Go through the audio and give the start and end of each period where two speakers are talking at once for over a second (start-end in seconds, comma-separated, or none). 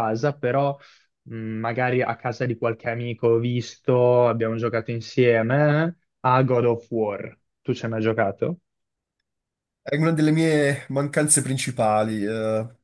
none